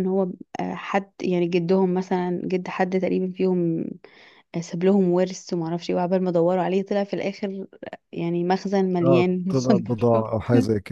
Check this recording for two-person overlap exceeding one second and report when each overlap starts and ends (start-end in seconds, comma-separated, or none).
9.0-10.3